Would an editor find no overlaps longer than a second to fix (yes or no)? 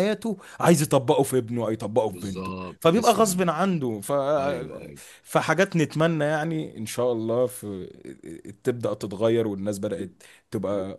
no